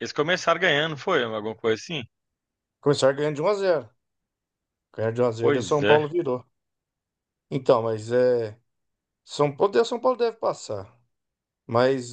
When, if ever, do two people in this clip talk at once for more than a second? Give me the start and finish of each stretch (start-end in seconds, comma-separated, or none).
none